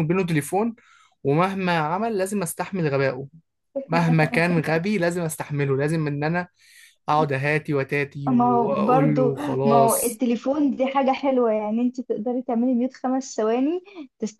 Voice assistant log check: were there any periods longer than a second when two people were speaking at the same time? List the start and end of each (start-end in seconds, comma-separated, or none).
8.3-10.2